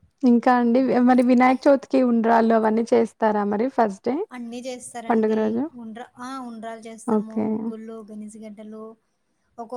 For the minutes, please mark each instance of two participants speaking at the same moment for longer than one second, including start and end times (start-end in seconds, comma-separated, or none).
none